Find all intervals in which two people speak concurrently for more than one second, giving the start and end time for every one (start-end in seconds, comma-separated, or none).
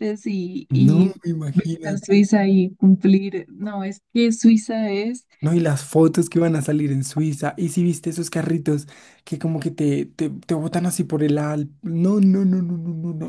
0.7-2.3